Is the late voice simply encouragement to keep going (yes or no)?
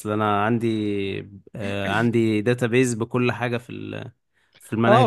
no